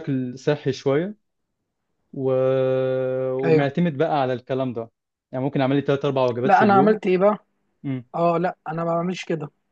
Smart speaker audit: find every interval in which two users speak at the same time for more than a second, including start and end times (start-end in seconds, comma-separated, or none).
none